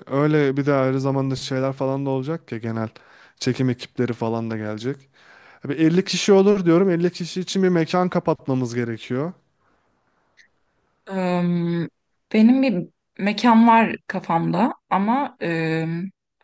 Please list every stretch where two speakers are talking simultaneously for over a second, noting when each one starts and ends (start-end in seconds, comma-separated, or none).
none